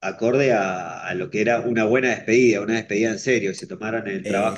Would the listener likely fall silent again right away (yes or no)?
yes